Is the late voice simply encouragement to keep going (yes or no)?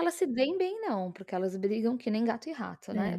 yes